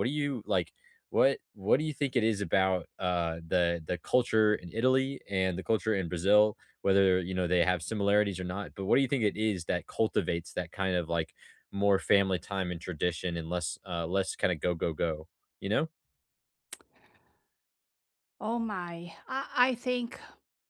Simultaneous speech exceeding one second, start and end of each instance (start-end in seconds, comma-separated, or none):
none